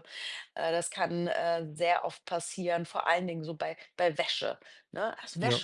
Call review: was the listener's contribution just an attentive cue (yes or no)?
yes